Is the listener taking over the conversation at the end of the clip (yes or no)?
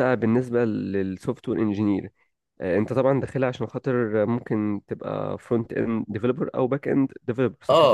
yes